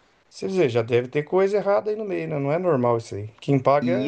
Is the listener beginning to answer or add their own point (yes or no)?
yes